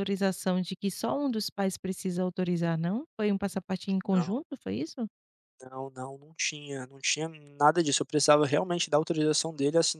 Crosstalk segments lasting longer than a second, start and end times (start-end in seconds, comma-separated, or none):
none